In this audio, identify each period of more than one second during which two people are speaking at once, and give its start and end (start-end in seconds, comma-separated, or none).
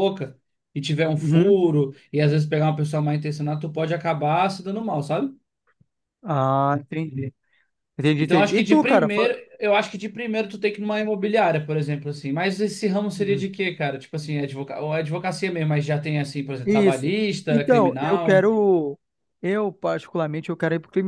8.2-9.4, 16.6-18.5